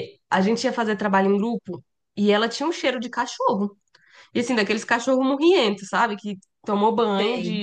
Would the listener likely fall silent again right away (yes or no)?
yes